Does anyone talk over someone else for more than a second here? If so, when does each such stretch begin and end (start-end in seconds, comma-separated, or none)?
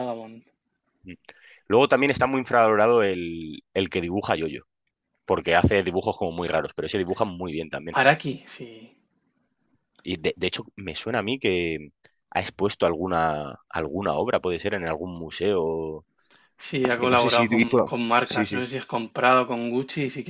16.9-18.6